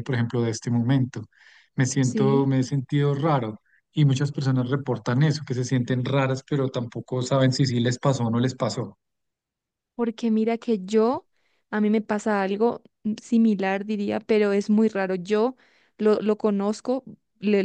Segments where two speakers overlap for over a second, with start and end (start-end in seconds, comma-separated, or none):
none